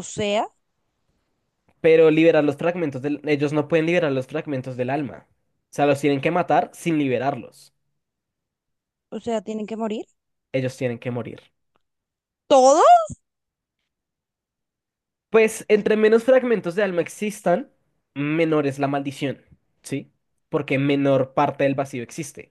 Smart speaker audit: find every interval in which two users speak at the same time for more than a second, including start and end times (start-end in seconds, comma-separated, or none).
none